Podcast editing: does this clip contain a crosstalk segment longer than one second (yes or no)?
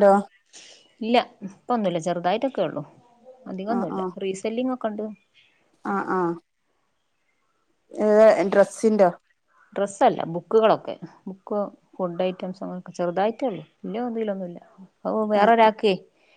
no